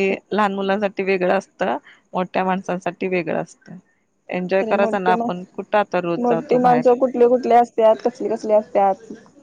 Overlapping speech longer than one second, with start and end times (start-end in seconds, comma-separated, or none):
none